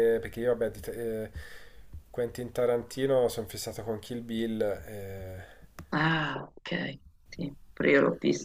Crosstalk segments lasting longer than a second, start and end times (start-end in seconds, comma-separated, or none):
none